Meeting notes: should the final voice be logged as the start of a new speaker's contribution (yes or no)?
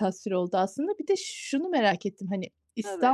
no